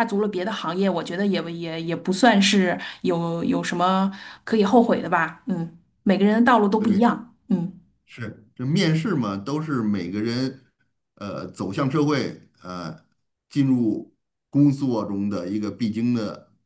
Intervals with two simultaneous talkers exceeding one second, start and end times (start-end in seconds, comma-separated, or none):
none